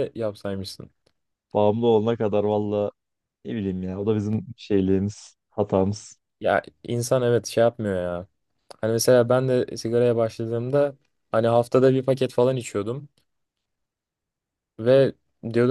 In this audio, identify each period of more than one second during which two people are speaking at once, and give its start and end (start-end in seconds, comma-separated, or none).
none